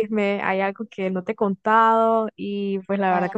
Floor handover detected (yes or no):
no